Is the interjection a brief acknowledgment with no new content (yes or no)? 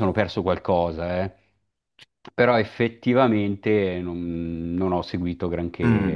no